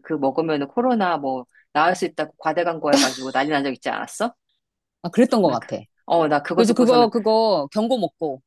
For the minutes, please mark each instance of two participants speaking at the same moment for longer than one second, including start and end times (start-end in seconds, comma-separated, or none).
none